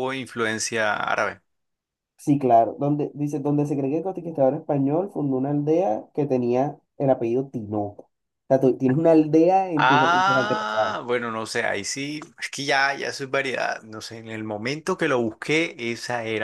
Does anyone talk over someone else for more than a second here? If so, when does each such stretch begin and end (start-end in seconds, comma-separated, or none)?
9.8-11.0